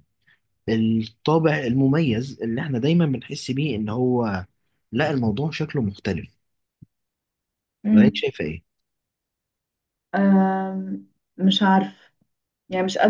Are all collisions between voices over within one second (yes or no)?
yes